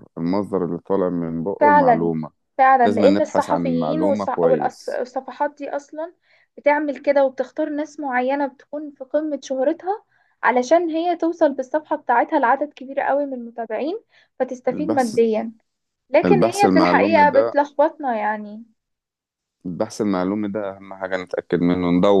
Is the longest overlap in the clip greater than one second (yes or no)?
yes